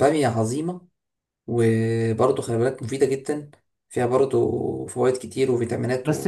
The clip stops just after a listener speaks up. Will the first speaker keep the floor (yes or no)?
no